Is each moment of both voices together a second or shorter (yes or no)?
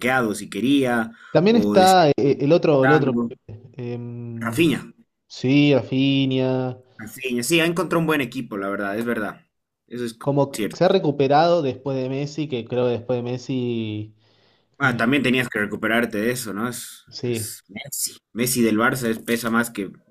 yes